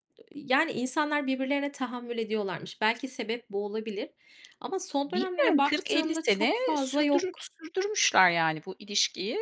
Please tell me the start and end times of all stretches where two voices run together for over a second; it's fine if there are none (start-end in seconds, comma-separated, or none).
5.0-7.5